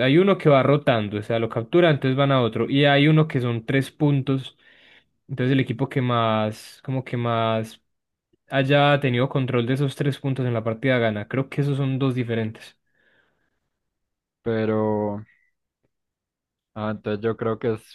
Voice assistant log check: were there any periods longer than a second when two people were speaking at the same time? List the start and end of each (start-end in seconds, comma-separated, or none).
none